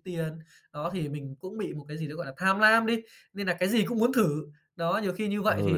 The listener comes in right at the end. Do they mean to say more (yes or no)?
yes